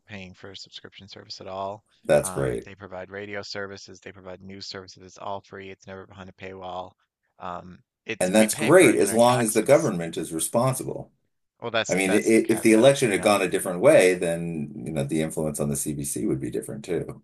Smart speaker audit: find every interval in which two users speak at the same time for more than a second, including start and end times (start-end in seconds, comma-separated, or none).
8.2-9.9, 11.9-13.4